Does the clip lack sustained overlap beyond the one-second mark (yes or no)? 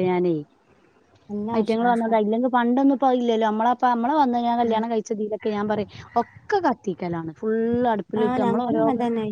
yes